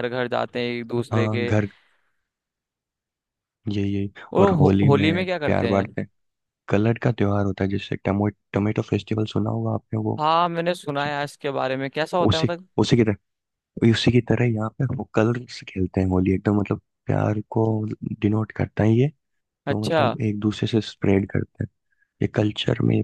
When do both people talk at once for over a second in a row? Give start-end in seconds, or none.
4.3-6.0